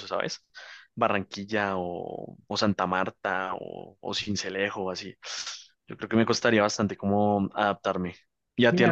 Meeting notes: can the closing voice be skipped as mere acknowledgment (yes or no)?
no